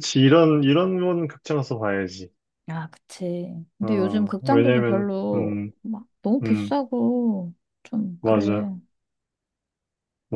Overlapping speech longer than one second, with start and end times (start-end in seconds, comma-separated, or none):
3.8-5.7